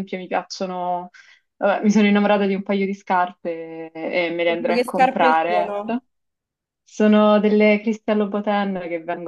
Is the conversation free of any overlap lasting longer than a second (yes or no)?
no